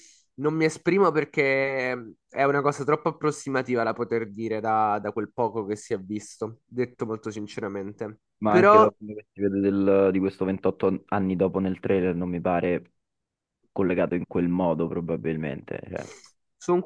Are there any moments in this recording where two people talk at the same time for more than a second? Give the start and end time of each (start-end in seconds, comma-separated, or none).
none